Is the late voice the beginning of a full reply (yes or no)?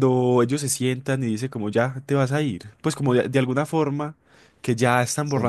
no